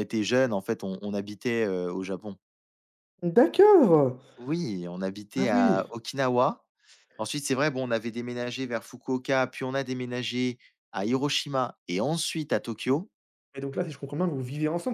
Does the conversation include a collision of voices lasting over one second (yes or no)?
no